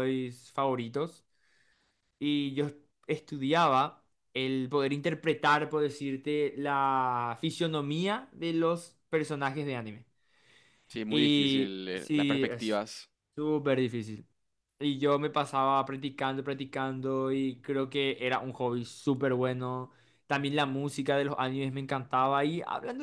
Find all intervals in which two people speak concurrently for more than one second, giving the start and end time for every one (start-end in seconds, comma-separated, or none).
11.1-12.8